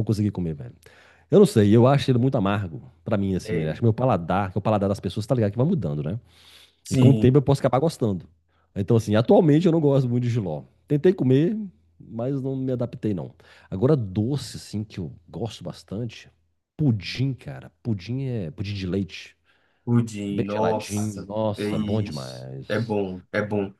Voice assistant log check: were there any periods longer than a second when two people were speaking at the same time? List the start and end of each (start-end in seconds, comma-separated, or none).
20.3-22.9